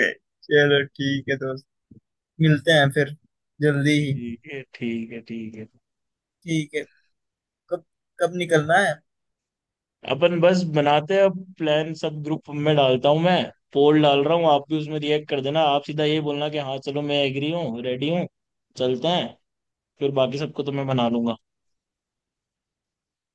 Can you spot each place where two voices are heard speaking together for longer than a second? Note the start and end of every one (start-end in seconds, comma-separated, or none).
none